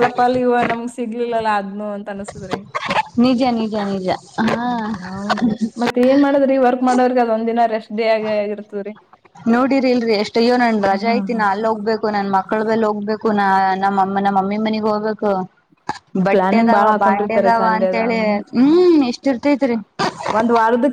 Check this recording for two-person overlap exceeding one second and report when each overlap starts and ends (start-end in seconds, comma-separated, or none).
16.4-18.2